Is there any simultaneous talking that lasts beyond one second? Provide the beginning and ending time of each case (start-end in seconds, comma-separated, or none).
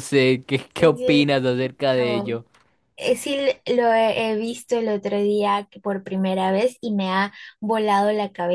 0.8-2.3